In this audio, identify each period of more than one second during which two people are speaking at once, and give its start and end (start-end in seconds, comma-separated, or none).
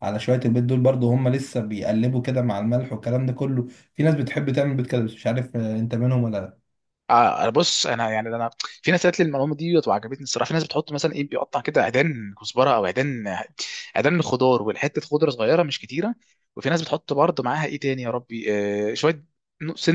none